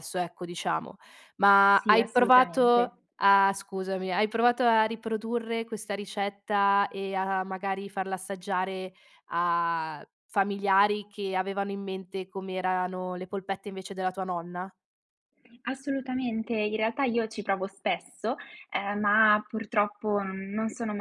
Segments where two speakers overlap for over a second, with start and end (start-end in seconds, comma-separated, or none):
1.7-2.9